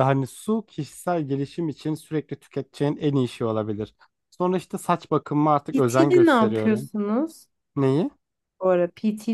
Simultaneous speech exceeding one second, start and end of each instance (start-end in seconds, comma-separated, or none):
5.7-6.9